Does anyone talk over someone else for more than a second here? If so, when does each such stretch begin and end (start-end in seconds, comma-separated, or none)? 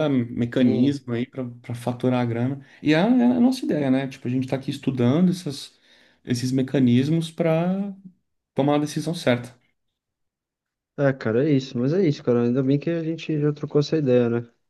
none